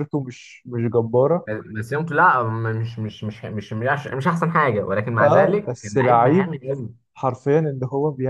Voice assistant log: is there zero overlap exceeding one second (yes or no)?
no